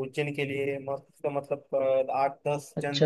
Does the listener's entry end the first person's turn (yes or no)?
yes